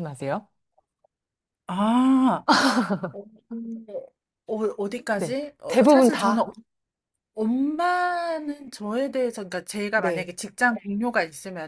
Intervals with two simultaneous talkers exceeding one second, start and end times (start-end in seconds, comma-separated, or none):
5.1-6.5